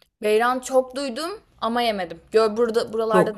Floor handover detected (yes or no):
yes